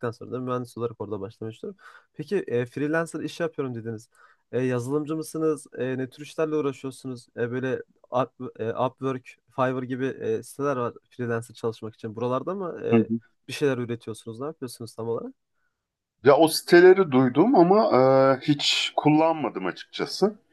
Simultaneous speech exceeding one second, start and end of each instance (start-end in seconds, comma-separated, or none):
none